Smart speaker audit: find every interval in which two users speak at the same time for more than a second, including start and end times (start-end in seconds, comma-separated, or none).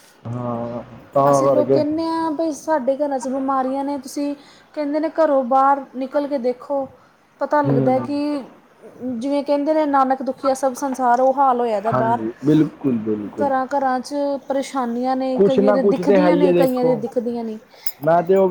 15.3-17.0